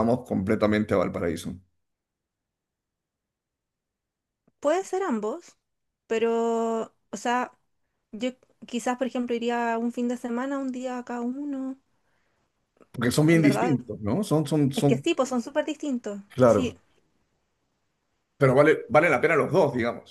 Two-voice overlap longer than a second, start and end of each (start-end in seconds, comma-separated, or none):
none